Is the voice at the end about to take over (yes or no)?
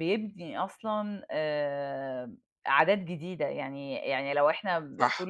no